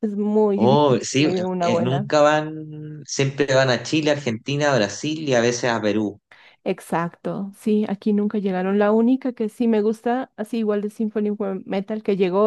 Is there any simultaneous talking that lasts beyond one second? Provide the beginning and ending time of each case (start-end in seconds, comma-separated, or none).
0.6-2.1